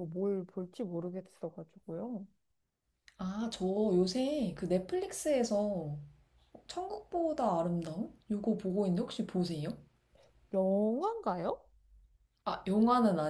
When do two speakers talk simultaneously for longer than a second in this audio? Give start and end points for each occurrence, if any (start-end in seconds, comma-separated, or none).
none